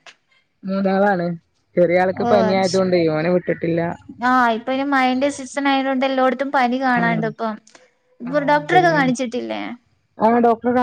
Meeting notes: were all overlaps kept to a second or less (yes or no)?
yes